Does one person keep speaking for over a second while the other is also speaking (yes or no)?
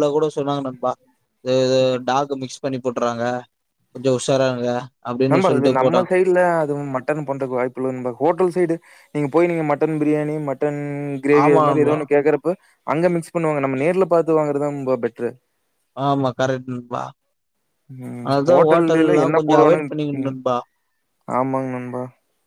yes